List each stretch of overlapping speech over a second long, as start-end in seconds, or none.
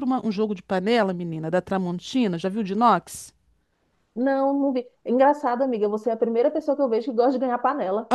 none